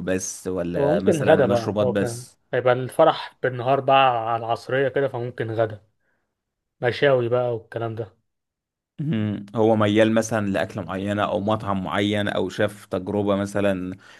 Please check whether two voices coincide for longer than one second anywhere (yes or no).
yes